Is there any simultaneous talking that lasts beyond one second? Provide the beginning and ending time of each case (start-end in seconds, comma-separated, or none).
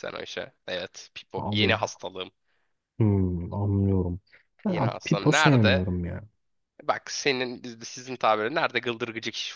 4.7-5.9